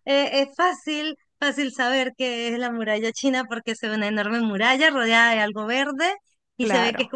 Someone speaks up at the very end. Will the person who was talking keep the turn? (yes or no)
yes